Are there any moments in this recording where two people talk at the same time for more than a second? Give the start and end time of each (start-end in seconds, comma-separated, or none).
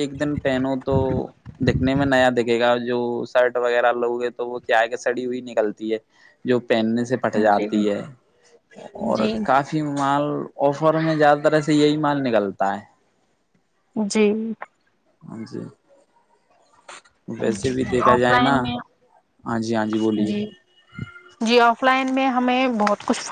none